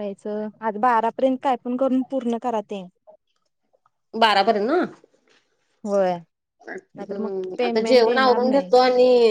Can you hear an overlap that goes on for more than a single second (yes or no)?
yes